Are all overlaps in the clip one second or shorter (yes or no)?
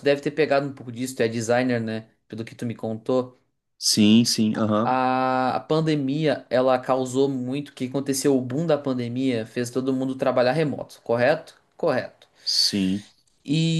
yes